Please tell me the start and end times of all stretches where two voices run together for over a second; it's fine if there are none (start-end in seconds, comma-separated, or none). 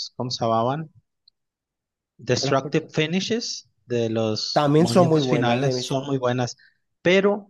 4.5-6.0